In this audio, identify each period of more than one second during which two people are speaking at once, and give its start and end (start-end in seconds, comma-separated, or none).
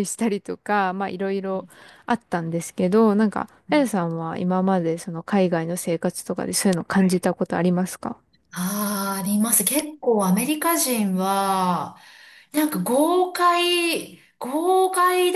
none